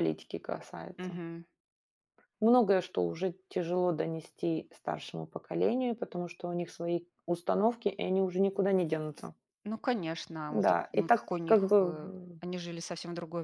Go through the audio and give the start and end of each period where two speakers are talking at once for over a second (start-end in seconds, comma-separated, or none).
10.5-12.4